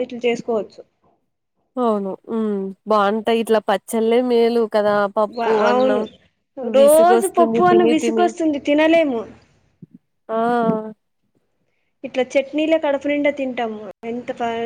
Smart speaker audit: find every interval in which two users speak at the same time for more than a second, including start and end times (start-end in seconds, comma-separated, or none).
6.8-8.3